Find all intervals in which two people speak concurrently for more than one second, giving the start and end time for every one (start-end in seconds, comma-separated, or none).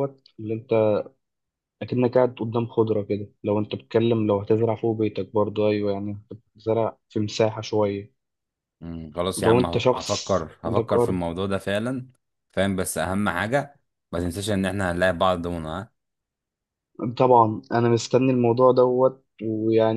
9.4-11.2